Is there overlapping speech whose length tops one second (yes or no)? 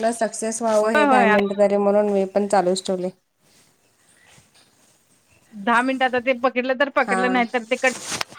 no